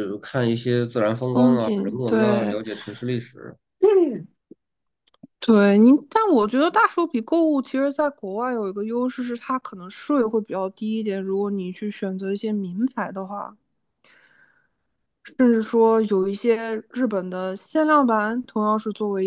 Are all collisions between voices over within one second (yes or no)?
no